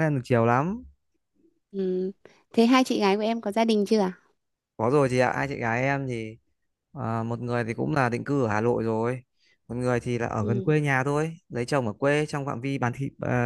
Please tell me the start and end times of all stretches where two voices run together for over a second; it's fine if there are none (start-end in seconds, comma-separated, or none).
none